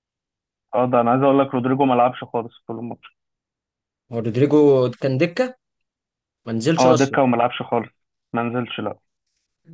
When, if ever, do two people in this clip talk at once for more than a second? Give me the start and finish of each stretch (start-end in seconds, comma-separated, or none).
none